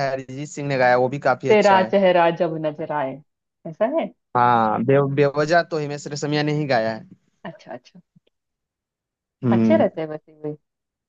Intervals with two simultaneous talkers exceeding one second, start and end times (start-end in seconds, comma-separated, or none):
none